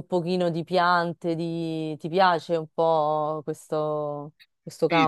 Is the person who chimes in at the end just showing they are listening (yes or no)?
no